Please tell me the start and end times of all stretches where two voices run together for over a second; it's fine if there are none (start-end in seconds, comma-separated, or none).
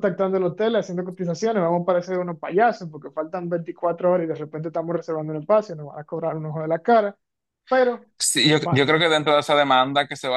none